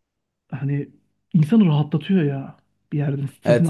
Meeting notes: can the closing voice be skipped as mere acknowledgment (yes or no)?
no